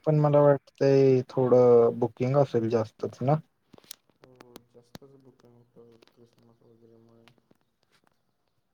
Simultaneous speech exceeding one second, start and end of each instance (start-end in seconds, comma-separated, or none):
none